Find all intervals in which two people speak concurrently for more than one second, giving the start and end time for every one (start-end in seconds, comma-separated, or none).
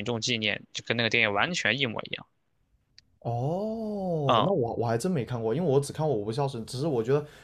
none